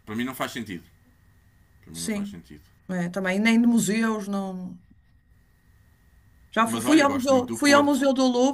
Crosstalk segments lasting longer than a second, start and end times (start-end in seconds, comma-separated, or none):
6.7-8.0